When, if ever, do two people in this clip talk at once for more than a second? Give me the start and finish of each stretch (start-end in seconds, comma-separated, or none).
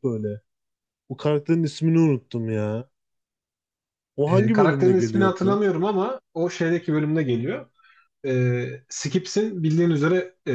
4.3-5.6